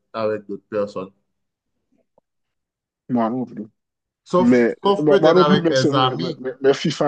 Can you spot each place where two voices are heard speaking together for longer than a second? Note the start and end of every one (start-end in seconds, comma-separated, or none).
4.4-6.4